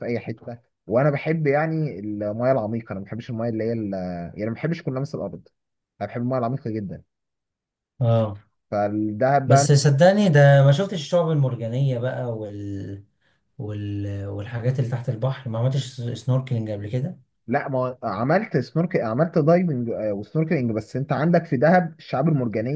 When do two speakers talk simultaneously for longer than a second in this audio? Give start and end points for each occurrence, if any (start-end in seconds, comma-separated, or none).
none